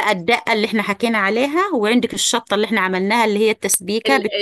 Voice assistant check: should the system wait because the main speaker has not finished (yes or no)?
no